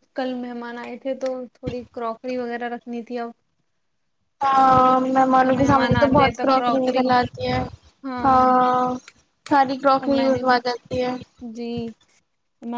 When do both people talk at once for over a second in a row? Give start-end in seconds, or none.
5.4-7.1